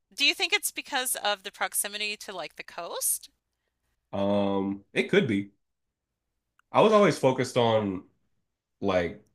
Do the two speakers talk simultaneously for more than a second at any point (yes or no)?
no